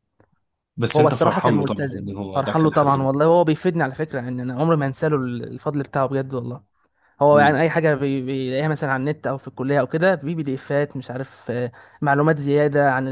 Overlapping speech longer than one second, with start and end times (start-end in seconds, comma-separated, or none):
0.9-3.1